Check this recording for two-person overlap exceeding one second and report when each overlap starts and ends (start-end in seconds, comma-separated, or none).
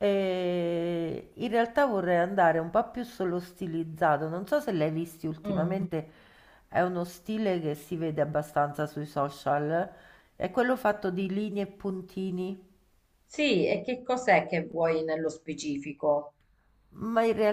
none